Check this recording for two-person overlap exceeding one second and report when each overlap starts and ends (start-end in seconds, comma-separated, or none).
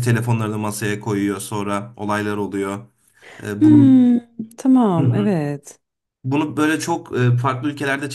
none